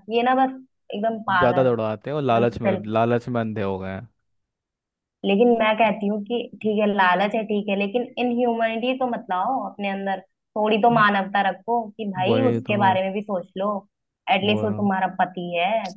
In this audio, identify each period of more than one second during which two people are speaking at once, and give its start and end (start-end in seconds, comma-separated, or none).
1.4-2.9